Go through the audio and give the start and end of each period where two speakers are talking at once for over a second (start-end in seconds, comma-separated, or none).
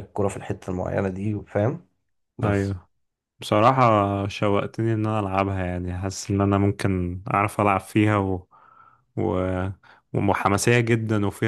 none